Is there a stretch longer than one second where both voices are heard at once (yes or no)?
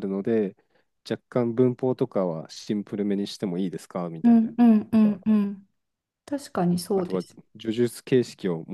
no